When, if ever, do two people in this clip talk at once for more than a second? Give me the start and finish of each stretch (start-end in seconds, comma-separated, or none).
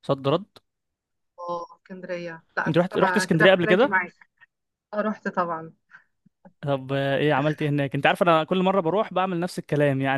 2.7-3.9